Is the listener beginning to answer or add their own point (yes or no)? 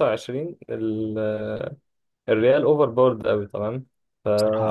no